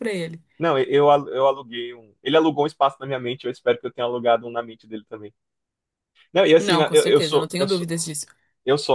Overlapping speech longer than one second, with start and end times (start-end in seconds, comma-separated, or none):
6.6-7.9